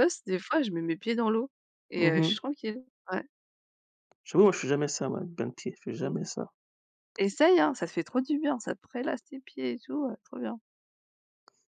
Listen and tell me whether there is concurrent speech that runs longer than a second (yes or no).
no